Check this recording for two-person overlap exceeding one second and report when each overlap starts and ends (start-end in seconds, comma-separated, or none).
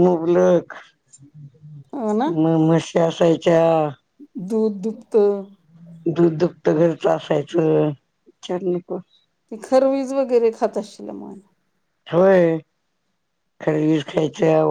none